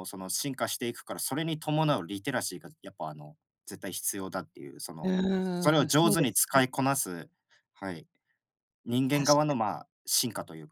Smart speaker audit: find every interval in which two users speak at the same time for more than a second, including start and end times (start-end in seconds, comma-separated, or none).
5.0-6.6